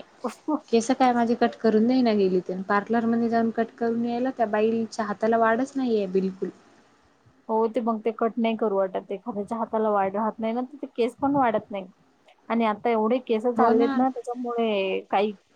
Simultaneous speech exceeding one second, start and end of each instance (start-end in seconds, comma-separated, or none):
none